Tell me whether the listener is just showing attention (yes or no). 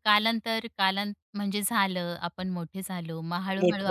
no